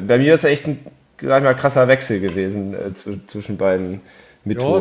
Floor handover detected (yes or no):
yes